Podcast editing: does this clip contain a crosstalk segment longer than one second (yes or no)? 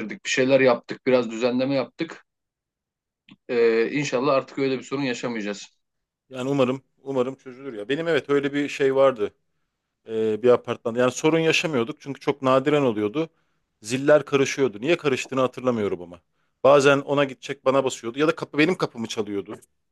no